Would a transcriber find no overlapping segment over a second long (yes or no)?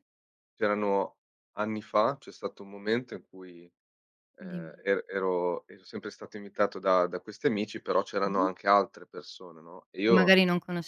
yes